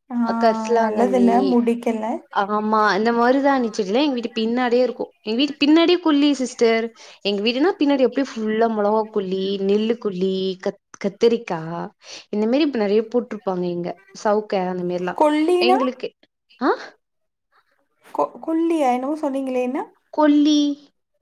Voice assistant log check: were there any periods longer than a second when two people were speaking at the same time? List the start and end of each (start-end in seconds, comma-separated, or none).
none